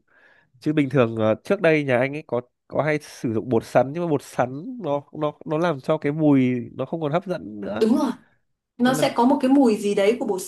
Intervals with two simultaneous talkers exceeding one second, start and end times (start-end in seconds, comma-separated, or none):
none